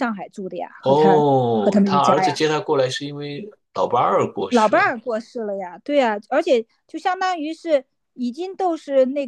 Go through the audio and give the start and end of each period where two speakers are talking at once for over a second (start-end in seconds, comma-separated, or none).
0.8-2.4